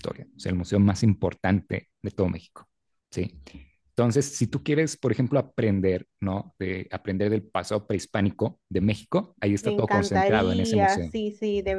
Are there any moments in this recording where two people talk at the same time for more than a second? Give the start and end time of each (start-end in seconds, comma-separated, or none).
9.6-11.1